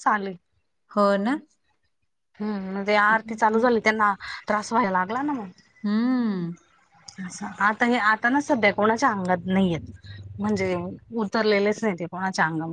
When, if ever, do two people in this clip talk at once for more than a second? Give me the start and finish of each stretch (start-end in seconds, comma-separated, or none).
none